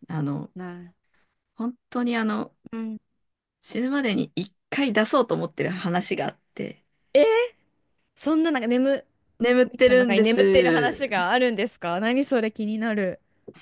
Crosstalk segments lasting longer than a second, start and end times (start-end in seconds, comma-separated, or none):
9.7-11.0